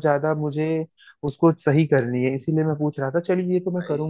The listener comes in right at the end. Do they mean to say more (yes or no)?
no